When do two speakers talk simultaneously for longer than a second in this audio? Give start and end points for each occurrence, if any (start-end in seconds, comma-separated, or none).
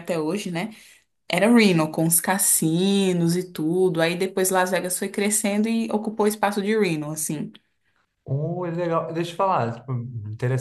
none